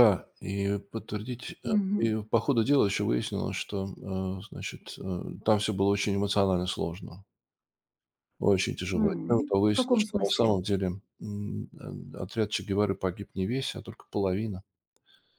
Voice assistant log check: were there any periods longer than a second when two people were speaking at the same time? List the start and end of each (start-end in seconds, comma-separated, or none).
8.9-10.6